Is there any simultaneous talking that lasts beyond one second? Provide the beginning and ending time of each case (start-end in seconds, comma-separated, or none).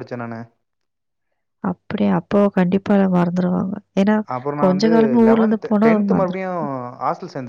none